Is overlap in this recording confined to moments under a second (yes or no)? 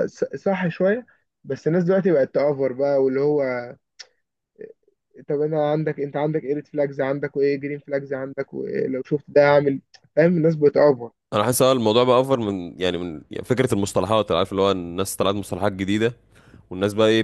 yes